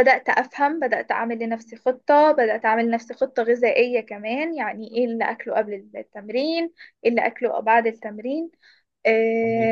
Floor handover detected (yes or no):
no